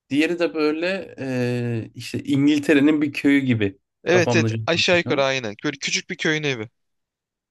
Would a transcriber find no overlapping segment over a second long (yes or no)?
no